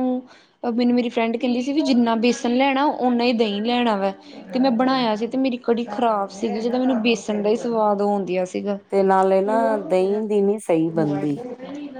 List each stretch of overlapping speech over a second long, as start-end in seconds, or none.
none